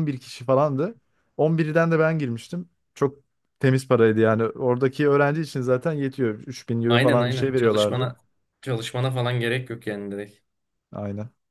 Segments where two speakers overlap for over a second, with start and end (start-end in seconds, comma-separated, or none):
6.9-8.1